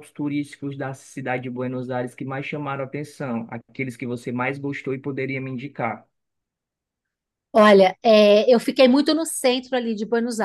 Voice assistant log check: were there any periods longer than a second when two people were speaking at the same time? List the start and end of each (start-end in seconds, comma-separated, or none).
none